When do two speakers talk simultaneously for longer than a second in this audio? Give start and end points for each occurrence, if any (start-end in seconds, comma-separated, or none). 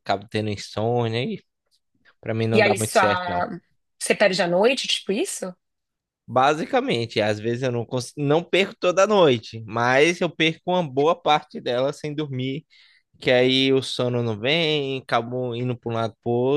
none